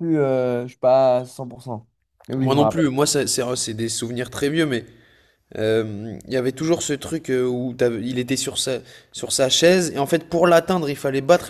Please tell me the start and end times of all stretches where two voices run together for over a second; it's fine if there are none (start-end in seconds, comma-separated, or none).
none